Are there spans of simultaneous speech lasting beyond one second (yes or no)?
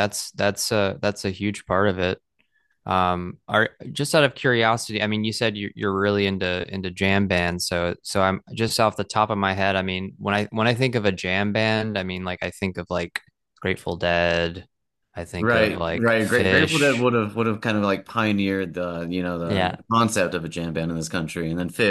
yes